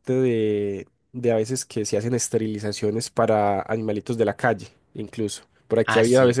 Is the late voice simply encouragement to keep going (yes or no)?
yes